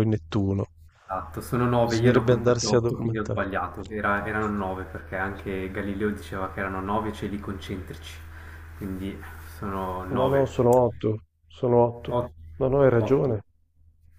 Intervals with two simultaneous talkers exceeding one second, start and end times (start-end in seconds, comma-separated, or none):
1.9-3.4